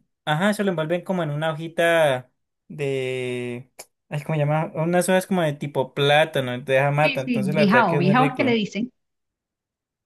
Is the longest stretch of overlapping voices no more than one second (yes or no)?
no